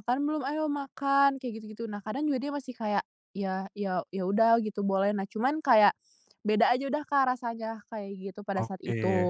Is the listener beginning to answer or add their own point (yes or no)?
yes